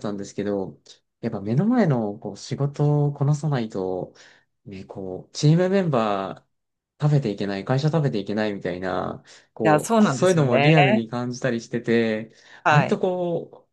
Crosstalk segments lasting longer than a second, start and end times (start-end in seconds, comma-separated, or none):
9.6-11.1